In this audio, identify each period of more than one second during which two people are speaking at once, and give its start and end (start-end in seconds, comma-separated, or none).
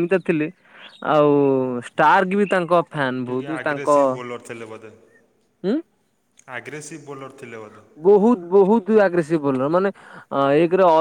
none